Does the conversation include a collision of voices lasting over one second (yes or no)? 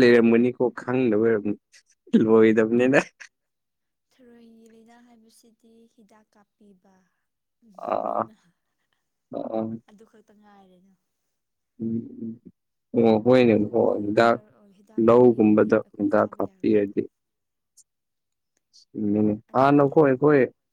yes